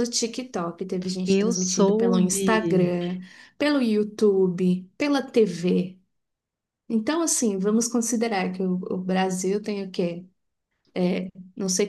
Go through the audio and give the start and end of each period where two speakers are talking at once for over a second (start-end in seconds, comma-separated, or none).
1.2-2.9